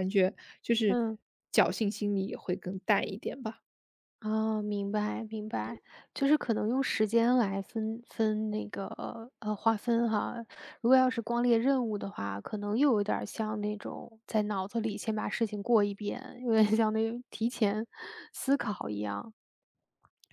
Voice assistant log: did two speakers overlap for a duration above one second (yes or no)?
no